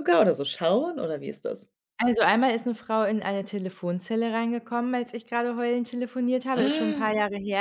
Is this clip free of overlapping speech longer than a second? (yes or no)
yes